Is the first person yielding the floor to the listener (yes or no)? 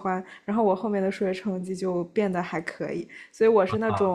yes